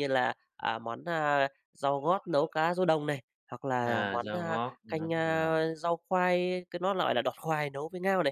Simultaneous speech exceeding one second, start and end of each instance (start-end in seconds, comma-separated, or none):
3.9-5.6